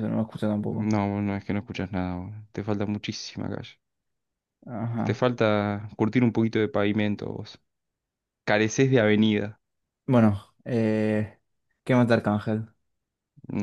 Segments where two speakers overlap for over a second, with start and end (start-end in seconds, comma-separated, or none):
none